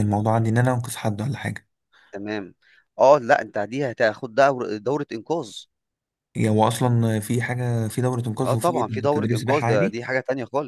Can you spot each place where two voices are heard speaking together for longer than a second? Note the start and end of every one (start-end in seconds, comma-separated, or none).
8.5-10.0